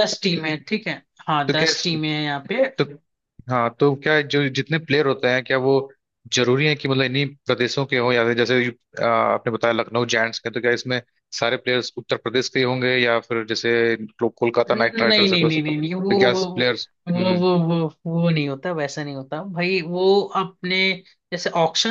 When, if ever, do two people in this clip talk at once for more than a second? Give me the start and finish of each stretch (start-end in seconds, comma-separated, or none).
14.7-16.4